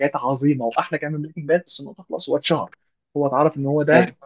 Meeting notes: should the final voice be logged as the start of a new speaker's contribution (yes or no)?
no